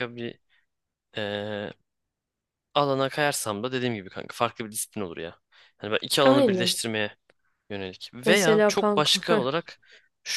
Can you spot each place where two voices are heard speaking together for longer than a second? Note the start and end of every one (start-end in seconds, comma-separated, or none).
8.2-9.4